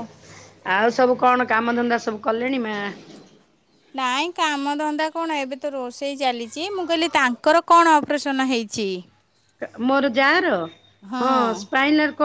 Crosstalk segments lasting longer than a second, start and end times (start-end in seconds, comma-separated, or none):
none